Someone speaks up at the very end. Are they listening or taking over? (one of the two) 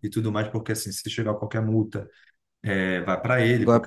listening